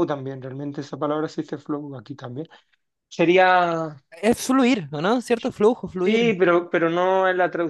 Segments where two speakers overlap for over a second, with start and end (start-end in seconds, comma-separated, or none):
none